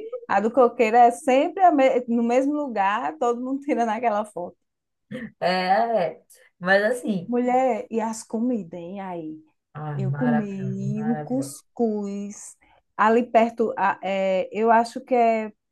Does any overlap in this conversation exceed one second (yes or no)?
yes